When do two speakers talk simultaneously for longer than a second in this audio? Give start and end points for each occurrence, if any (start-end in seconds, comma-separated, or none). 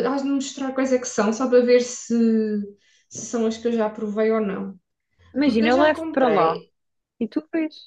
5.4-6.6